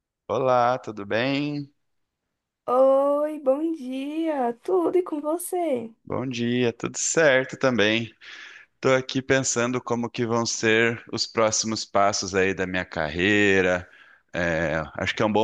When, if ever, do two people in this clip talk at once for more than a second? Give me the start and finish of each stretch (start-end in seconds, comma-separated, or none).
none